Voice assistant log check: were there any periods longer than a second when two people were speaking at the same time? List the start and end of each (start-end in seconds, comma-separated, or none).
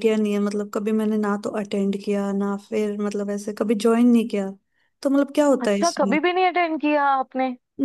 none